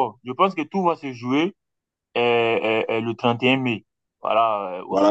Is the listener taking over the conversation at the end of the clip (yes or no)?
no